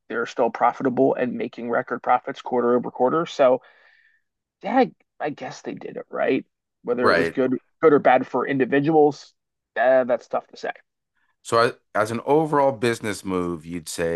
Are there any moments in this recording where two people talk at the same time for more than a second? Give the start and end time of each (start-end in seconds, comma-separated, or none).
none